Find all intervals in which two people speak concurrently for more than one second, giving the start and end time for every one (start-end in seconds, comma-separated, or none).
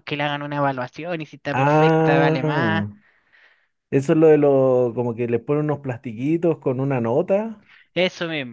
1.5-2.9